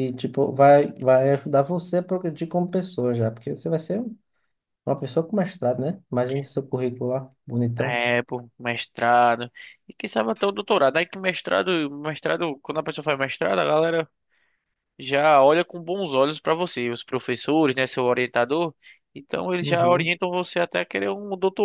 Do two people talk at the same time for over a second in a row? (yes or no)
no